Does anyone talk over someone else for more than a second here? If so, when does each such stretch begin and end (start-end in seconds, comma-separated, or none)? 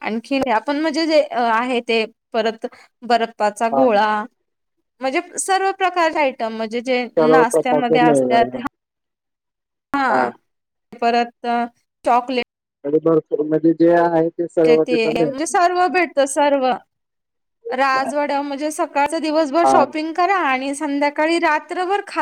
7.2-8.6